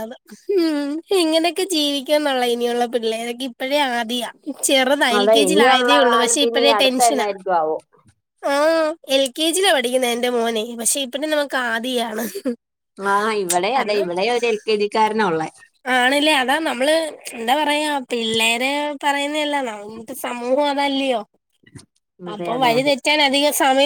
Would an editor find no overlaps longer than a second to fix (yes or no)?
no